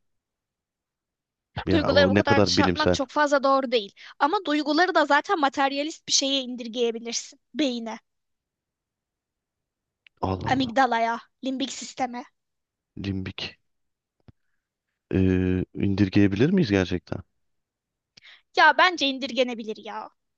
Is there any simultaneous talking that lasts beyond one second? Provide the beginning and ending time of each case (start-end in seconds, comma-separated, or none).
1.7-3.0